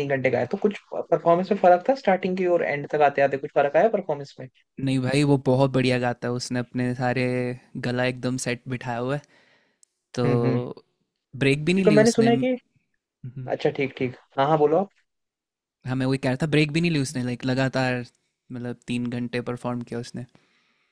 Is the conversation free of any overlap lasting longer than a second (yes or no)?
yes